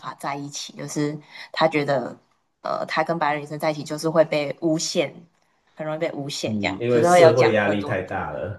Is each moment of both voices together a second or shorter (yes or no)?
no